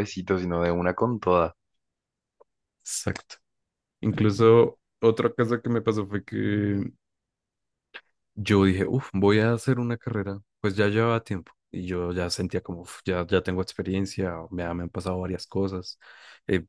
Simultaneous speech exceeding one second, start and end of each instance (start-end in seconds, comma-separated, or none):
none